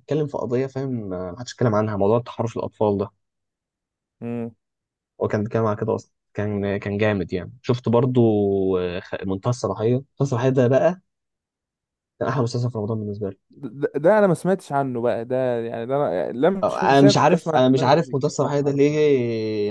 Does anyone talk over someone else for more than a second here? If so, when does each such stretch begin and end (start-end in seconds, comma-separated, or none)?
16.6-19.0